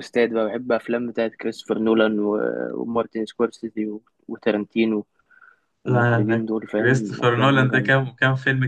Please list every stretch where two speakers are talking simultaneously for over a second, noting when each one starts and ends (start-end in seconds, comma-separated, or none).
5.9-8.0